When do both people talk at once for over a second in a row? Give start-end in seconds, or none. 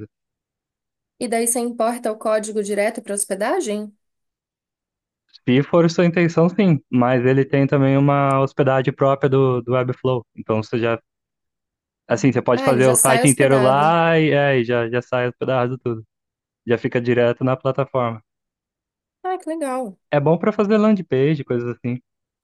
12.6-13.9